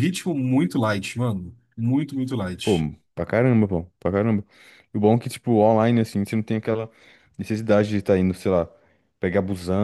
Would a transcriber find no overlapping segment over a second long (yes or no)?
yes